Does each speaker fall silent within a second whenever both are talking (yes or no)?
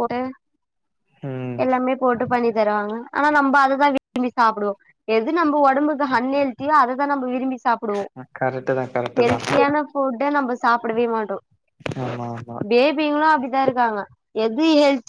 yes